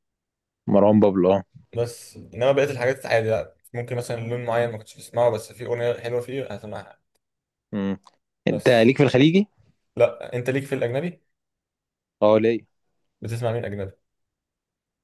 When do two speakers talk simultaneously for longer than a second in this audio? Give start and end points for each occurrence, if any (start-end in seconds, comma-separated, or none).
none